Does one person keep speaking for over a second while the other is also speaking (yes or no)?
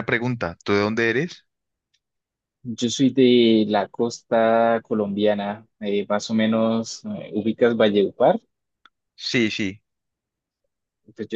no